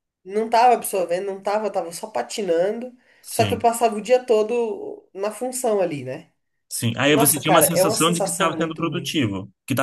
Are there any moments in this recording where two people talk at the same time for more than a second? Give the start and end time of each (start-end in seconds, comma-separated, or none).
7.1-9.2